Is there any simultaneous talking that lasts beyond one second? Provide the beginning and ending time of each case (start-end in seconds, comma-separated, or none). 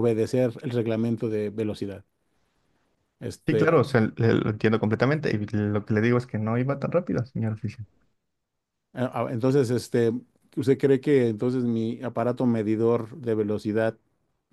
none